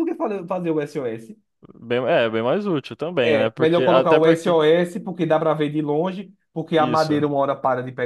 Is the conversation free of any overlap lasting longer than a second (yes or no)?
no